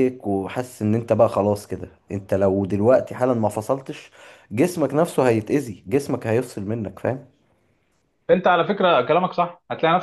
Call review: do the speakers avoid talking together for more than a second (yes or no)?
yes